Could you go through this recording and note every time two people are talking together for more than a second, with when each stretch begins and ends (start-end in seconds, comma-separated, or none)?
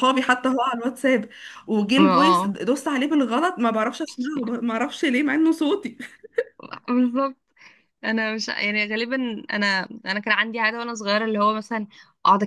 none